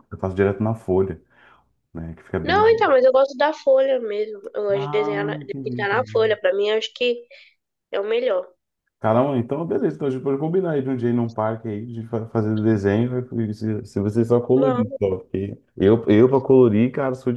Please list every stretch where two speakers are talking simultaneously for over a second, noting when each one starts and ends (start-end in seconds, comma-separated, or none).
4.7-6.3